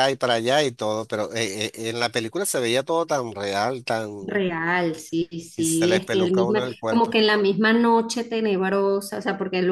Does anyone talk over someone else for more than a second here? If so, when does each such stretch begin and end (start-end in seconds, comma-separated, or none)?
5.5-7.2